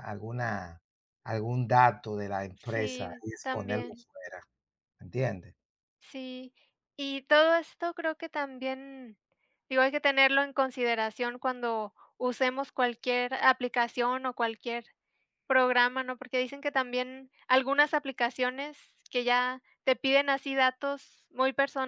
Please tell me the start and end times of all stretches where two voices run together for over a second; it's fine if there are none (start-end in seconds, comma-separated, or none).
2.5-4.1